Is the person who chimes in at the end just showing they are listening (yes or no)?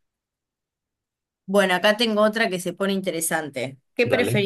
yes